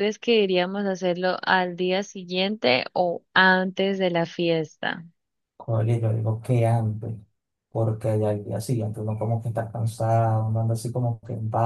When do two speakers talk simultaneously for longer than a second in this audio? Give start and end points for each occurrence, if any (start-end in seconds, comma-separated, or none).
none